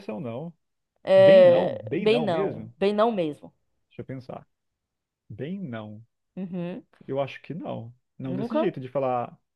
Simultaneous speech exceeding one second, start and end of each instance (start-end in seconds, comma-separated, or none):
1.2-2.7